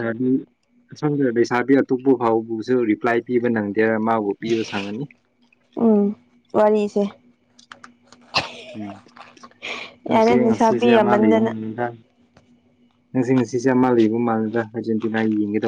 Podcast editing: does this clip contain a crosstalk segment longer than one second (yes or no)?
yes